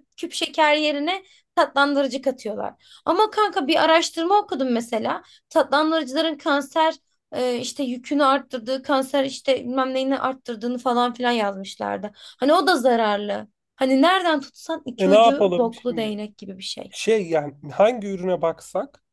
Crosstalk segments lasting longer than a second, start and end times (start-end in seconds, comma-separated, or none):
15.0-16.2